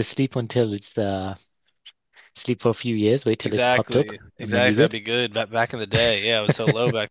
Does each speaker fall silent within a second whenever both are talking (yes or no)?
no